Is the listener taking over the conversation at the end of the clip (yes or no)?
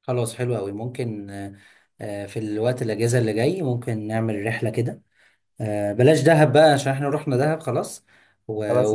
no